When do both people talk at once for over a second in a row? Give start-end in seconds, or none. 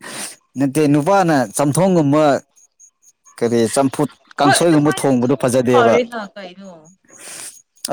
4.4-5.9